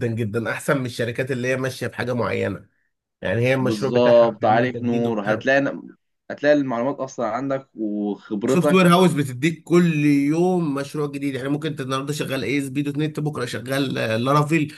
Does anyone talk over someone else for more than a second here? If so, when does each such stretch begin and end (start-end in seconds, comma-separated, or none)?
3.6-5.4